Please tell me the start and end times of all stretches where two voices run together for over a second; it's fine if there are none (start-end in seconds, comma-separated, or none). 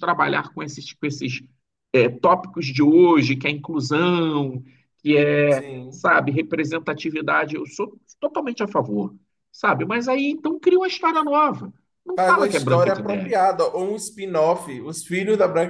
12.2-13.4